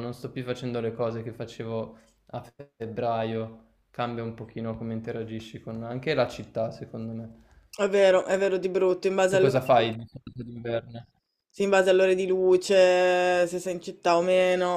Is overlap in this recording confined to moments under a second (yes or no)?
yes